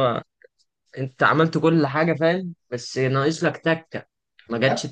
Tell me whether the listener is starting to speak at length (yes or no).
no